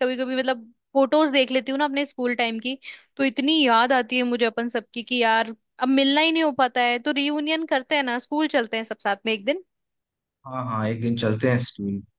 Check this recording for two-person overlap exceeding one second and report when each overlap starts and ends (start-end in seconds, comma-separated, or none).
none